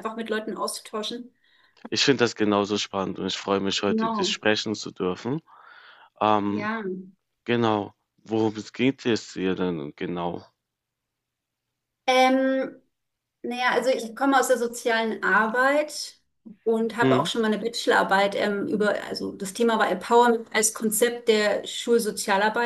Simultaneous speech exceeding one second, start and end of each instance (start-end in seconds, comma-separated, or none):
none